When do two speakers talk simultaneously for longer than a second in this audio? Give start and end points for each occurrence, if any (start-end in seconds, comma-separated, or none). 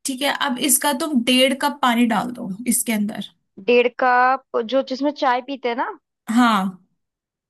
none